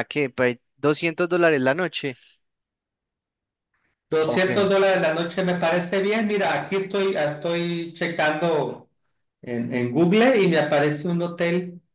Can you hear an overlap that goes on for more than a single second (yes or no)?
no